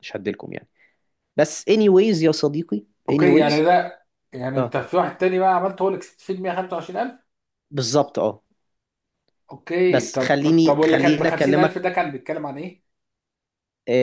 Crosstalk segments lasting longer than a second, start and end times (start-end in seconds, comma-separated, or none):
9.9-11.8